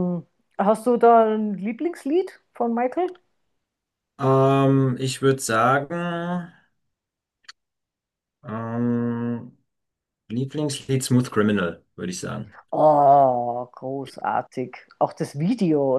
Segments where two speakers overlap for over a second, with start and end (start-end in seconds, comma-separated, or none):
none